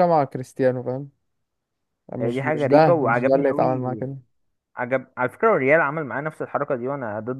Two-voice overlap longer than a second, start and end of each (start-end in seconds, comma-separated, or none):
2.2-4.1